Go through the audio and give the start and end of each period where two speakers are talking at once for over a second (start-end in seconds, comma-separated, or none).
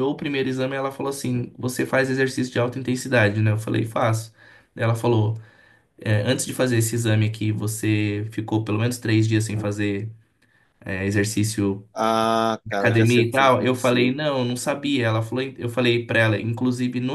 12.8-14.2